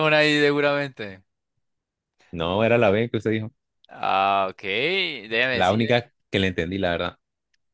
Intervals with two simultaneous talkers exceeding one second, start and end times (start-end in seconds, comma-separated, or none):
none